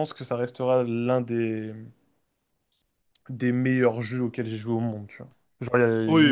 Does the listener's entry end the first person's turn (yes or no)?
yes